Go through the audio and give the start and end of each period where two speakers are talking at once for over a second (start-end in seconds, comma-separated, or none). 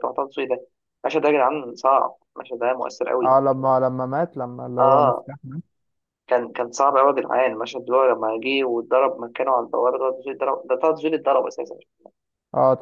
none